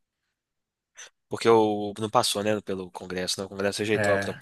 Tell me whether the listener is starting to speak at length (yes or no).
yes